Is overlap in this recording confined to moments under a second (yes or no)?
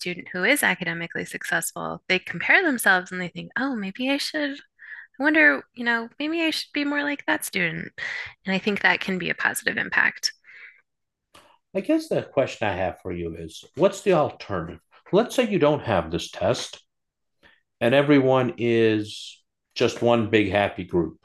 yes